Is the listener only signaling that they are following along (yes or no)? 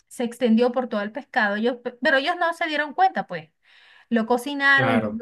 yes